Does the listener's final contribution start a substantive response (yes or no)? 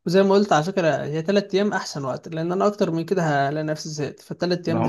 yes